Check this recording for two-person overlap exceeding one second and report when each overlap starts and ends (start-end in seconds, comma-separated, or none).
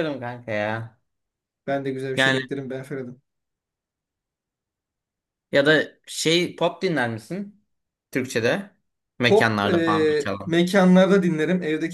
9.3-10.6